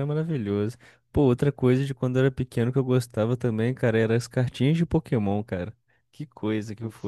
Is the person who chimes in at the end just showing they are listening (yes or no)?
no